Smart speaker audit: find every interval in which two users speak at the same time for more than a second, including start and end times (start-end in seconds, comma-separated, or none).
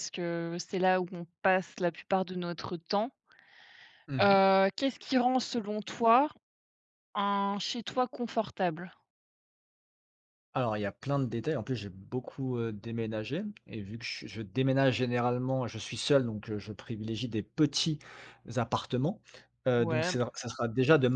none